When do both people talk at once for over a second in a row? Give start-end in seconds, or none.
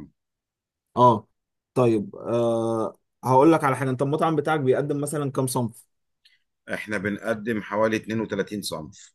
none